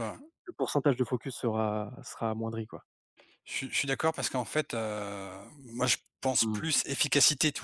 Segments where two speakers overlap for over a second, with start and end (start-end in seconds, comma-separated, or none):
none